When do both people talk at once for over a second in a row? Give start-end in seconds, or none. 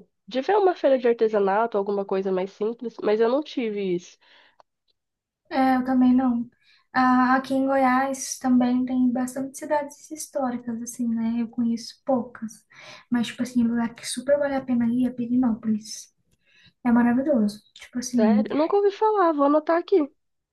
none